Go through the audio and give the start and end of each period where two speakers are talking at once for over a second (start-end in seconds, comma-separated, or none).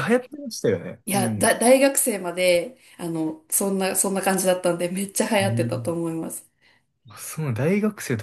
none